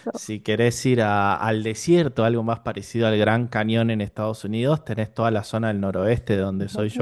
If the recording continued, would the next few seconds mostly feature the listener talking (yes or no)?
no